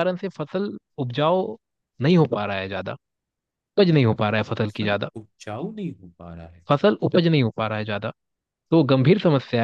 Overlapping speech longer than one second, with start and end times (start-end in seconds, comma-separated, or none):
none